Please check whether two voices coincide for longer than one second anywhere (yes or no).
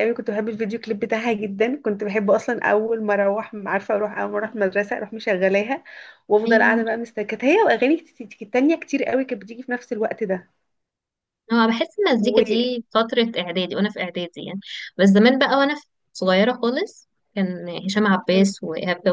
no